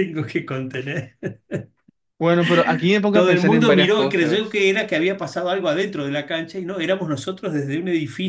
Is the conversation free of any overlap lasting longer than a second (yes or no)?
no